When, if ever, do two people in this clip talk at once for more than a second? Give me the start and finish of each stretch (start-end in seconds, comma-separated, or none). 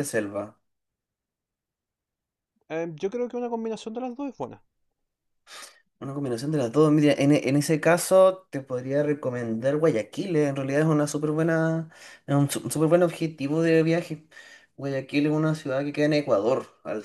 none